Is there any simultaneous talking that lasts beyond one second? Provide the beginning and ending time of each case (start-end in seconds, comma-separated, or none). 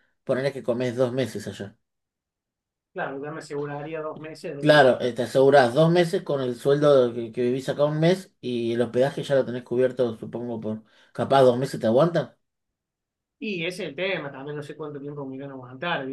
none